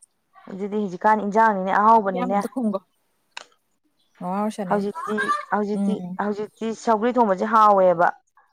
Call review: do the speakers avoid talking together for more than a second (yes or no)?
yes